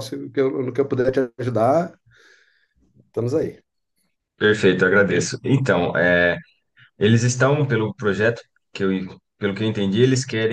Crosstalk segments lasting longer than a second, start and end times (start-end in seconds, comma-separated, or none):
none